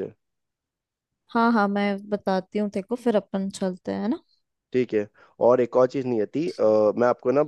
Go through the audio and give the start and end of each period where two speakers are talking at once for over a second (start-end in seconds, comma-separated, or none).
none